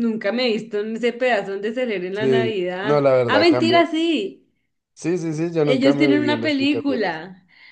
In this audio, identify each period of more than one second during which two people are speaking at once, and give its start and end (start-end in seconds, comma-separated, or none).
2.1-3.9, 5.6-7.2